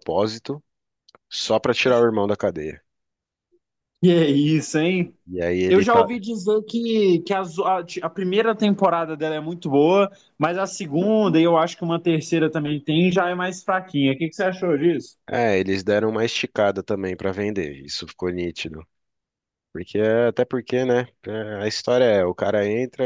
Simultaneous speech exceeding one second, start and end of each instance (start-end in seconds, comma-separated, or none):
none